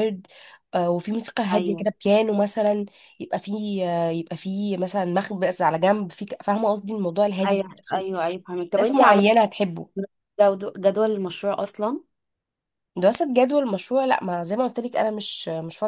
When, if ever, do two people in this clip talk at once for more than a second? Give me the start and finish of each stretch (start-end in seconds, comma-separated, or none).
none